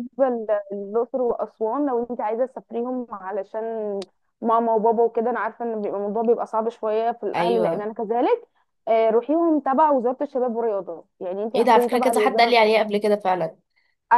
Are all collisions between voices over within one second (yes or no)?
no